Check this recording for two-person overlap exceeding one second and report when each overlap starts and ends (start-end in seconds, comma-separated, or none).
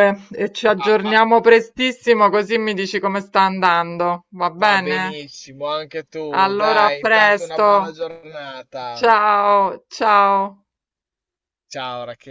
6.3-8.0